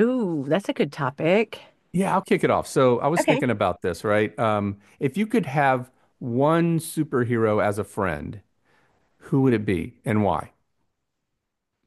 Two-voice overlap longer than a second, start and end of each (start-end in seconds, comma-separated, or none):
none